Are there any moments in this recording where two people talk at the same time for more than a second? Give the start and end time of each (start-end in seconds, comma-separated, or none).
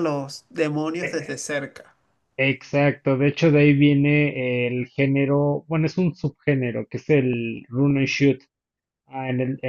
none